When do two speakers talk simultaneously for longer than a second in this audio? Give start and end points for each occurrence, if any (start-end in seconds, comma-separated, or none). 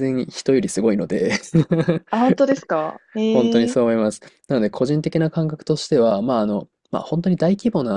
none